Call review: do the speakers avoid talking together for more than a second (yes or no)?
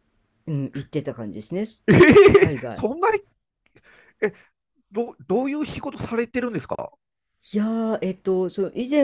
yes